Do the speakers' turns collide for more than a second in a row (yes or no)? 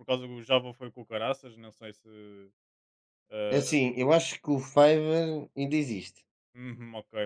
no